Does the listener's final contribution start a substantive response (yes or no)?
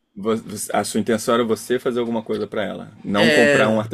no